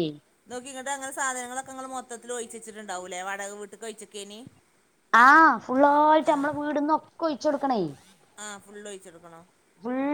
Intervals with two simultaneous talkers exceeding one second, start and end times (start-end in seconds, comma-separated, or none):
none